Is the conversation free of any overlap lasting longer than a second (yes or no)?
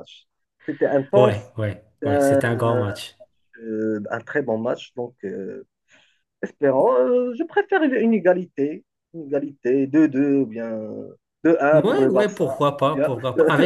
no